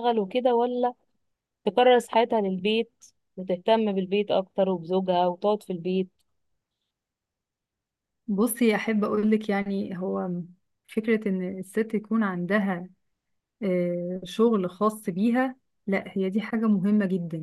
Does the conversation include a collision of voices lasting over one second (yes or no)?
no